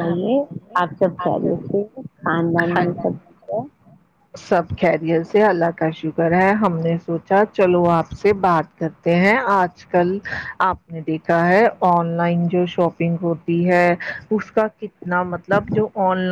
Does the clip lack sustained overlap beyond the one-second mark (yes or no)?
yes